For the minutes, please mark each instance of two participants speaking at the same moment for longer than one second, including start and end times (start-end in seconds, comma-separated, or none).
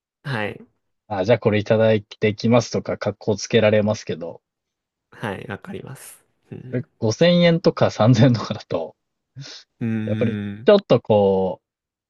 none